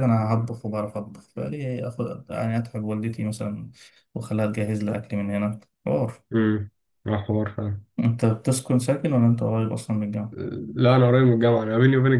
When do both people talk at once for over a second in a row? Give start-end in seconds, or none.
none